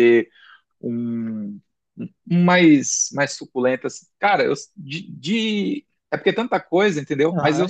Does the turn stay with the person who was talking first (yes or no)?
no